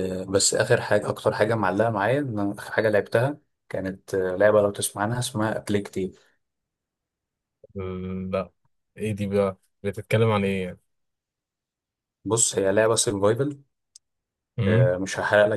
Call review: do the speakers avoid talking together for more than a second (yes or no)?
yes